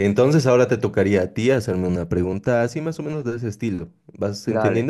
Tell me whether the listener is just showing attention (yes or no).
no